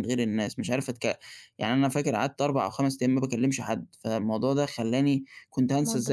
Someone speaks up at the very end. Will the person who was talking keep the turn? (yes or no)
yes